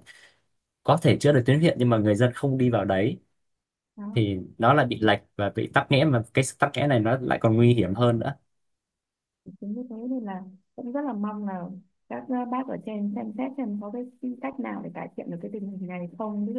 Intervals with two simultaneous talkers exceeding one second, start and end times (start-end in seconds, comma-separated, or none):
none